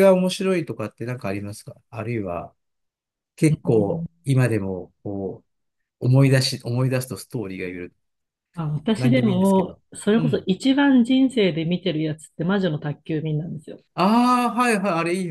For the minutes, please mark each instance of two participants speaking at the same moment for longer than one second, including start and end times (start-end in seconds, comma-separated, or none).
9.0-10.5